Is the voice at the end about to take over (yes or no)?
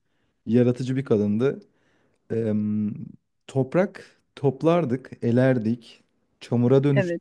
no